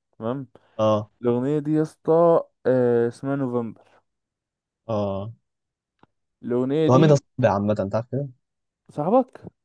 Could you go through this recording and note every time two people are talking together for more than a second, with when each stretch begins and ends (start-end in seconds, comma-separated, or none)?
none